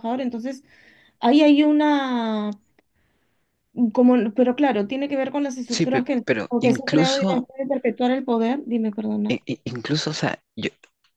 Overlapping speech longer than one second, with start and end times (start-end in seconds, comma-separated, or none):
5.7-7.5